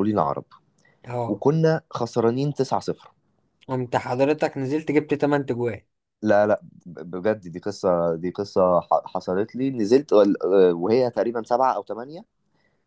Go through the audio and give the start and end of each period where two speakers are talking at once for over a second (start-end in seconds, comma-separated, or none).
none